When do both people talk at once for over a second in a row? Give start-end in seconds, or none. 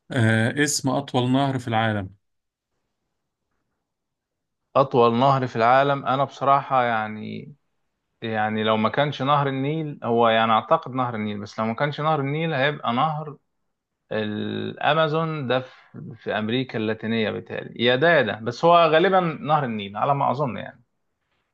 none